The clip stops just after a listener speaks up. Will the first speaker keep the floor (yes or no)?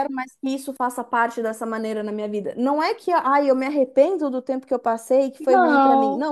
yes